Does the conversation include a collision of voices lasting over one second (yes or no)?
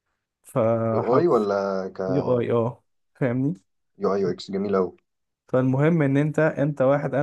no